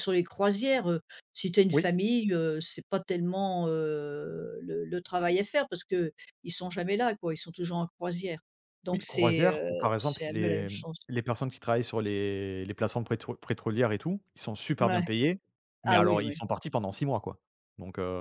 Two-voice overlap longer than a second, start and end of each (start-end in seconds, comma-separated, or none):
8.9-11.0